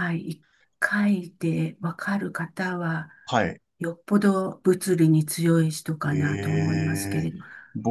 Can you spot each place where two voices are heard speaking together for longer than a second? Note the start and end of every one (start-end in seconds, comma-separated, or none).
6.1-7.3